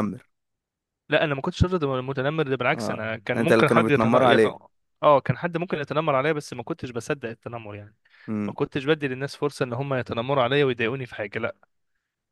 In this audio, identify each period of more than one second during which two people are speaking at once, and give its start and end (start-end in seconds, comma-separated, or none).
2.8-4.4